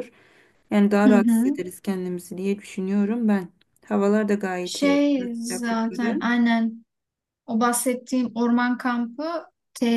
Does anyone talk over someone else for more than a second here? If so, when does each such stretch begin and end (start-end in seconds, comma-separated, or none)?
4.6-6.2